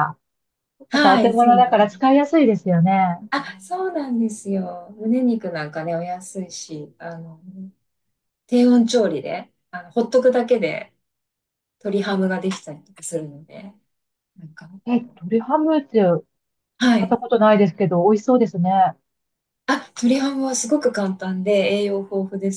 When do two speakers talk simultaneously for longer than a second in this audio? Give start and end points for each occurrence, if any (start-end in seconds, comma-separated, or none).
0.9-2.1